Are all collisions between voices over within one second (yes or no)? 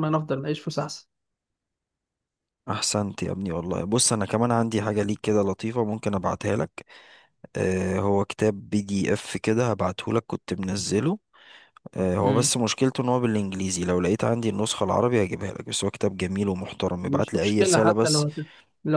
no